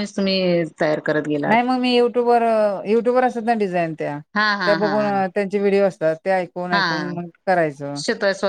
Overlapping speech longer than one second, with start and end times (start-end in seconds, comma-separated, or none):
none